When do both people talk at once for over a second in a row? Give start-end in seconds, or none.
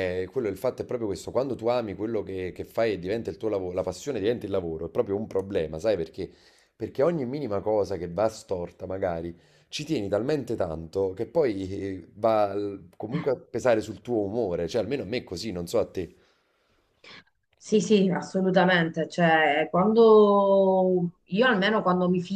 none